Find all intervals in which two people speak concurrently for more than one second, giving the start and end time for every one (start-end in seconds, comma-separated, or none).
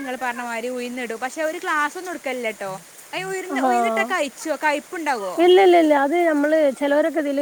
none